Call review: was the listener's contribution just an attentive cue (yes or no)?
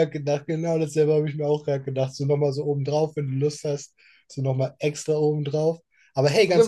no